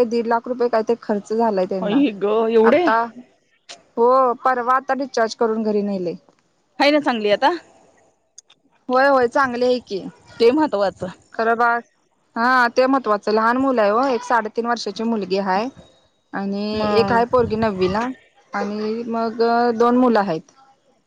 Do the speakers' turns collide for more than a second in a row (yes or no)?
no